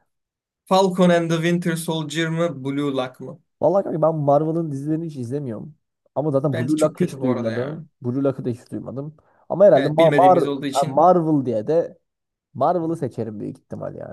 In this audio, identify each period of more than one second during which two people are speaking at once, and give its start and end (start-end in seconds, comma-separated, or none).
6.5-7.8, 9.7-11.1